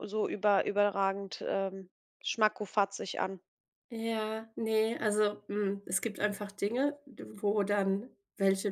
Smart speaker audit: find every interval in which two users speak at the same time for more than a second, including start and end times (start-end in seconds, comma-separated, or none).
none